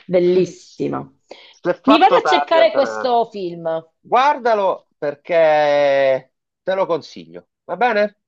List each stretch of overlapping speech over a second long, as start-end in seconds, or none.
1.9-3.1